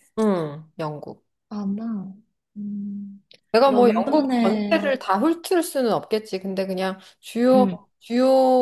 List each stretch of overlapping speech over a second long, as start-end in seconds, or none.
3.7-4.9